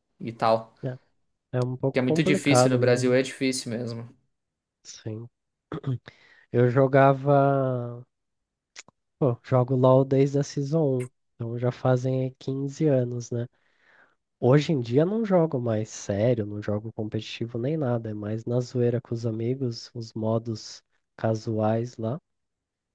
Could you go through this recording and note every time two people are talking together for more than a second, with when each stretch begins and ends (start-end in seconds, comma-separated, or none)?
1.9-3.2